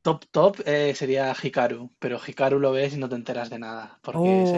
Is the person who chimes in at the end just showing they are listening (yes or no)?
no